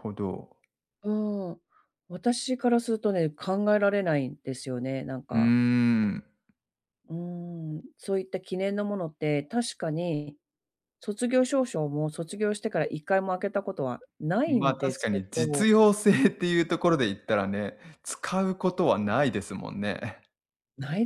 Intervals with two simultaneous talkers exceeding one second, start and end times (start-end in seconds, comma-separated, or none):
14.5-15.7